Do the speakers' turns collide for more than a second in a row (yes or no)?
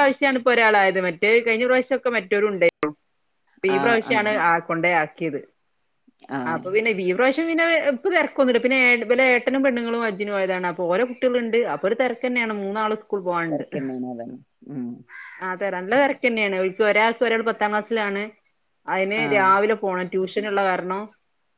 no